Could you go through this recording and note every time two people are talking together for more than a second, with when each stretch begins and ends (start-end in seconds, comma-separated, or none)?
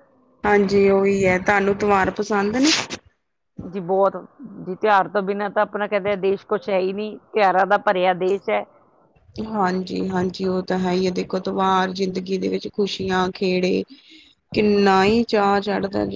none